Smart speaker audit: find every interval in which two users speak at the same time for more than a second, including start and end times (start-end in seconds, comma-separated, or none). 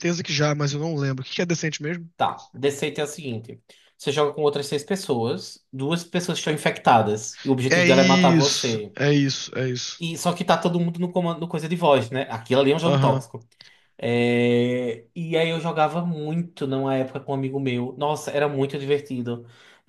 7.7-8.9